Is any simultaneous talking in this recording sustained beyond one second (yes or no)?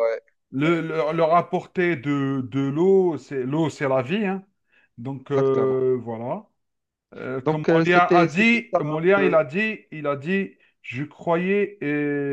yes